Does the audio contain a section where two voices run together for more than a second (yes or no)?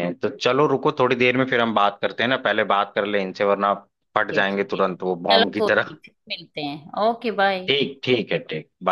yes